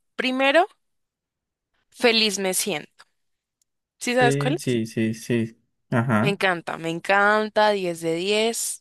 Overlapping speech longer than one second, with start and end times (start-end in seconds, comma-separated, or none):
none